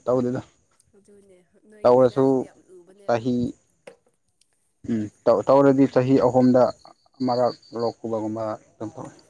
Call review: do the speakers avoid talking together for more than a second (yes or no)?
yes